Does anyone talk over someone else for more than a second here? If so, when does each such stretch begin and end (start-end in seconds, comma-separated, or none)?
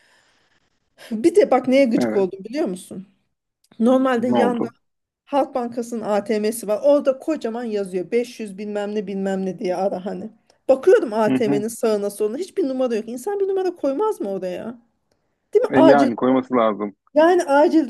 none